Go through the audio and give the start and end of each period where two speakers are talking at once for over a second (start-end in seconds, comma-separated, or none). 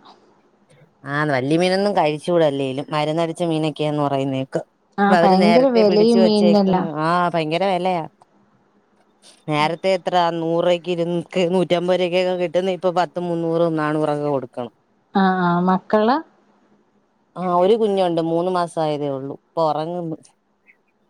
5.0-6.9